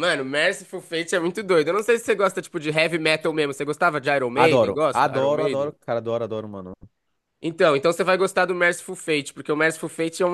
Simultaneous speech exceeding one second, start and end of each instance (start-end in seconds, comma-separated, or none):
4.3-5.7